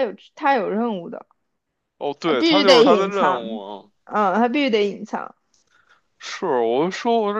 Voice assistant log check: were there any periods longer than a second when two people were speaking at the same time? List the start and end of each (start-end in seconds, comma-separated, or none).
2.2-3.6